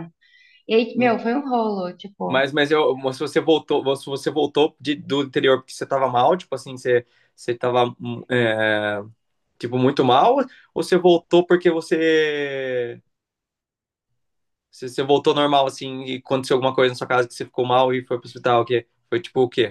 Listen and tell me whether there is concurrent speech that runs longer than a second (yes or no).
no